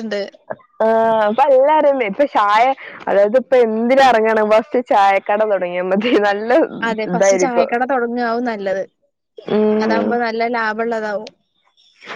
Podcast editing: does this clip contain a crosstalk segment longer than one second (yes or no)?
no